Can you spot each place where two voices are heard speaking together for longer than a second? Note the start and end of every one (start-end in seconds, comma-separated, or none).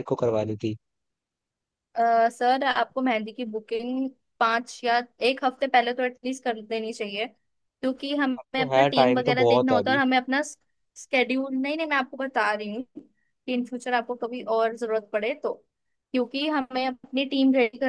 8.4-10.0